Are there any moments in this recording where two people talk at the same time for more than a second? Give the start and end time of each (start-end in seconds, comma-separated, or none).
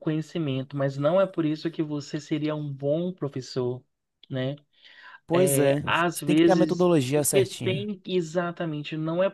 5.3-7.9